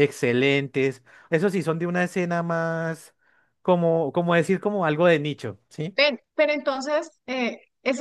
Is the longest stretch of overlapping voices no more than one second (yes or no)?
yes